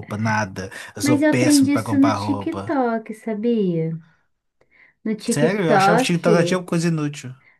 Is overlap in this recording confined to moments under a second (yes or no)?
no